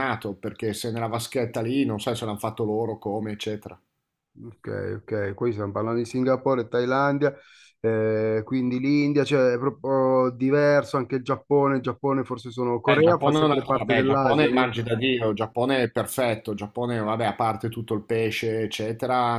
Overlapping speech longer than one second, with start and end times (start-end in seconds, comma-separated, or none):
12.9-14.7